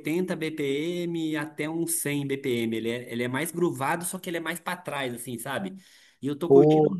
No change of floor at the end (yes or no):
yes